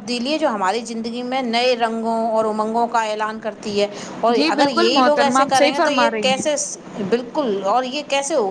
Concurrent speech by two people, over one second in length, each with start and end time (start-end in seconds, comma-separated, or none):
4.4-6.5